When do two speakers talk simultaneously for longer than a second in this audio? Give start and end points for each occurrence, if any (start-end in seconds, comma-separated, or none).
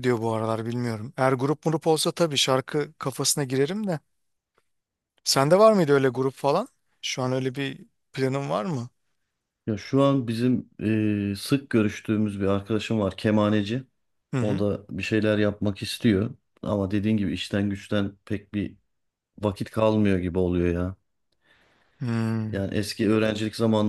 none